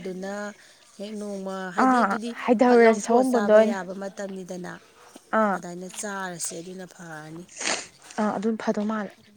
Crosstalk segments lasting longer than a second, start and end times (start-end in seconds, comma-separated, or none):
1.8-3.8